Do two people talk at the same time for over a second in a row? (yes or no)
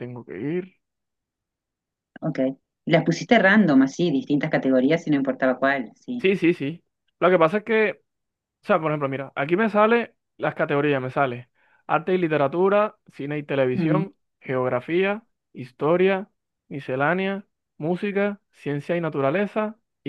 no